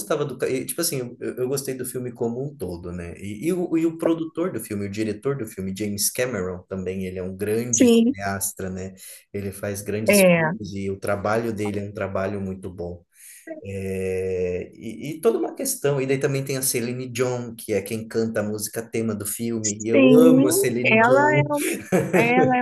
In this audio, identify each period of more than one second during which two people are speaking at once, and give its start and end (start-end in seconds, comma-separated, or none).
19.6-21.4